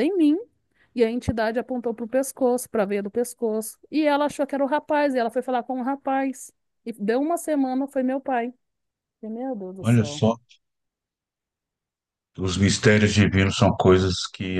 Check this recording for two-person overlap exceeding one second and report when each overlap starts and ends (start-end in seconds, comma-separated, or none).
none